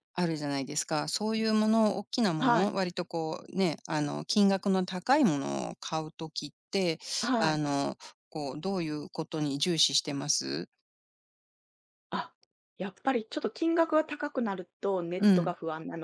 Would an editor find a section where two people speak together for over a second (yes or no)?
no